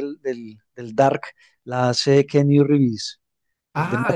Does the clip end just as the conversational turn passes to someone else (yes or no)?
yes